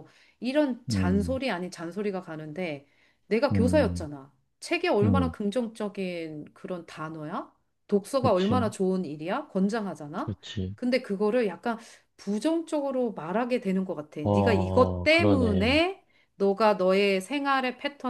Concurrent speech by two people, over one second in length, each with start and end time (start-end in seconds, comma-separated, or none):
14.2-15.8